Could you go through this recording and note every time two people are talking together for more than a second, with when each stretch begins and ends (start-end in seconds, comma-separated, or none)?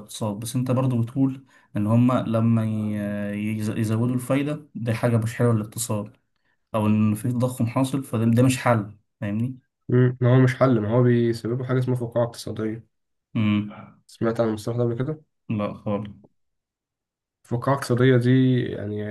none